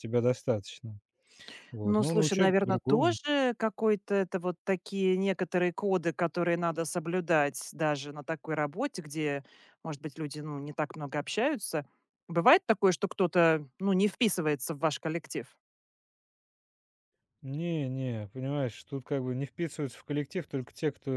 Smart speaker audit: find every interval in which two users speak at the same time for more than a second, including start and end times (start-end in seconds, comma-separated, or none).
1.8-3.2